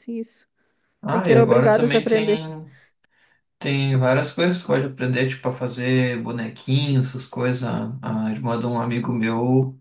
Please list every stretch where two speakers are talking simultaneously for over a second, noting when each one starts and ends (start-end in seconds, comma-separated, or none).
1.1-2.5